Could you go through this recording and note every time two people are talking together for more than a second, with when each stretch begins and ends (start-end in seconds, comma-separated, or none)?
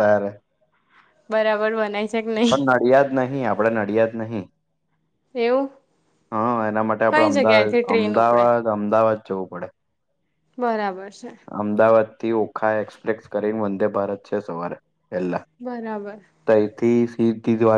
7.1-8.4